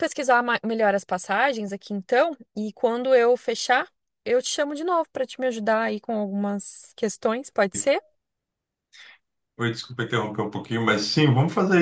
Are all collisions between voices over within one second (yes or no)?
yes